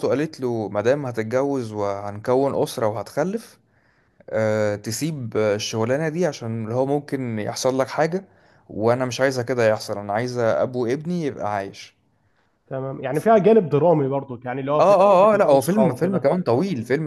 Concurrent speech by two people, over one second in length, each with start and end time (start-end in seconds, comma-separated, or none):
14.8-16.3